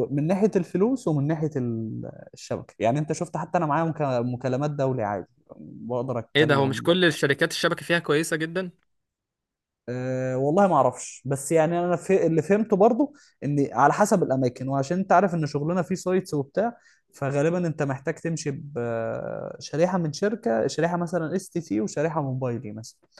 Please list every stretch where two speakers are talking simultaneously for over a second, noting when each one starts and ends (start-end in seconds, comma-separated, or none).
none